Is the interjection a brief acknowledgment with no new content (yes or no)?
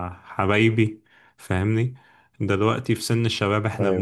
yes